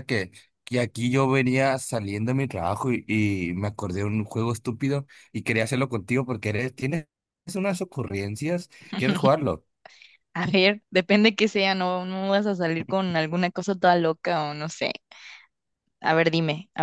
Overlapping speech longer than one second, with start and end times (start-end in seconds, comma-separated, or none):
none